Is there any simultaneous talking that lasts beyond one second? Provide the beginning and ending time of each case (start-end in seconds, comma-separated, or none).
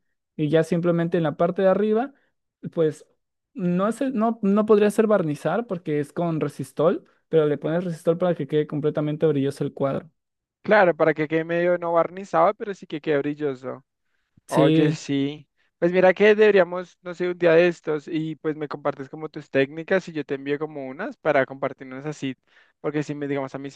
none